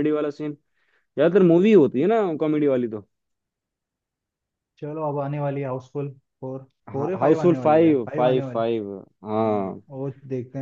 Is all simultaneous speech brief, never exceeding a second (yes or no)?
no